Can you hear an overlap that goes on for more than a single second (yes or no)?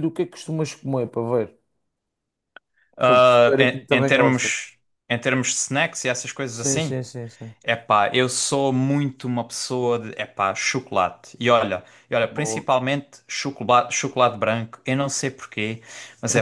yes